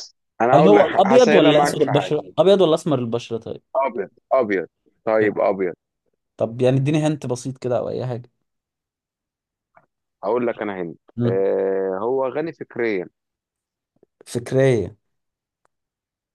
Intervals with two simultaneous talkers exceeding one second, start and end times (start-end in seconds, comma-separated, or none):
0.5-2.1